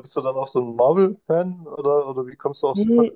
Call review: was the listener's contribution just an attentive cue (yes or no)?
no